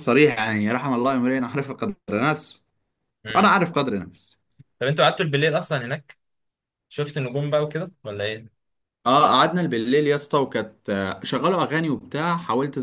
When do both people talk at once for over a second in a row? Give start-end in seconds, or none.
none